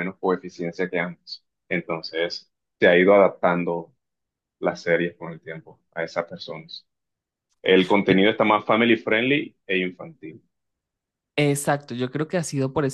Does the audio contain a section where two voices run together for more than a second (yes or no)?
no